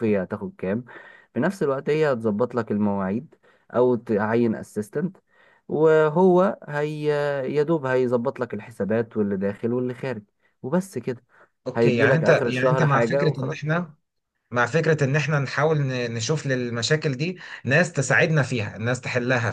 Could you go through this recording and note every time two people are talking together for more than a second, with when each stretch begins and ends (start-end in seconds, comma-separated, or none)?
11.8-13.8